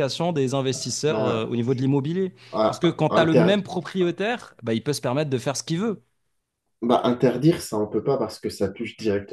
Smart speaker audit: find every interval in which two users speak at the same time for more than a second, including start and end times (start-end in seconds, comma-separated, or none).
none